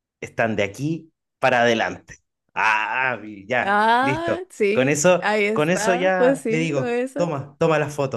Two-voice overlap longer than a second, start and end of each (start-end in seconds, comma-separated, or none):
3.6-7.3